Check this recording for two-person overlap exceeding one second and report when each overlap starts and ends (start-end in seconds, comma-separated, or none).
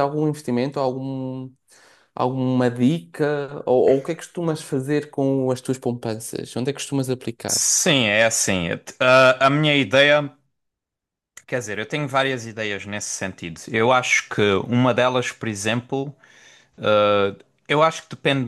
none